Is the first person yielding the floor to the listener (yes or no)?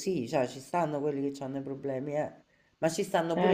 no